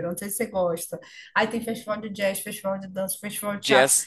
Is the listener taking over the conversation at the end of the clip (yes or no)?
no